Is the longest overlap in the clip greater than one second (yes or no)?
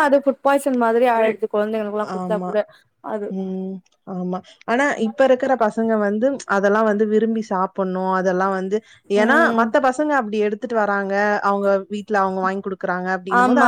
no